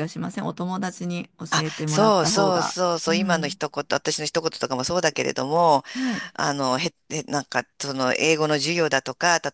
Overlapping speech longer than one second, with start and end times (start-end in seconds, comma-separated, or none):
1.5-3.6